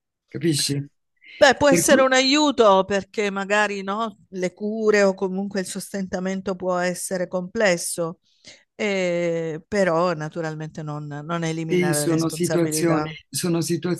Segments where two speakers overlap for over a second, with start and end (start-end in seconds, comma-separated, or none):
11.7-13.1